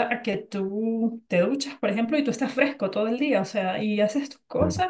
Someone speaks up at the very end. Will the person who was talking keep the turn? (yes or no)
yes